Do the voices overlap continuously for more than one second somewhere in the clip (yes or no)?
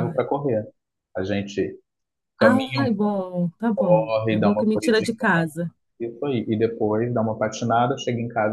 yes